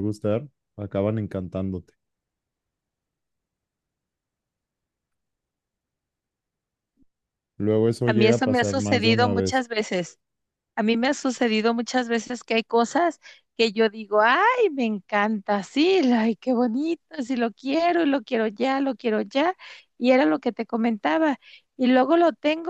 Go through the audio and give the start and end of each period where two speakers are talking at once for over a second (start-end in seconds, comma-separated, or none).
8.1-9.6